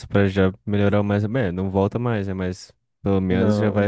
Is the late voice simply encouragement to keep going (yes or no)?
yes